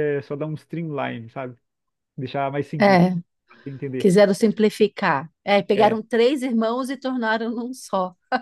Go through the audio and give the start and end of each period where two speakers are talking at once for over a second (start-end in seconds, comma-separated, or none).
none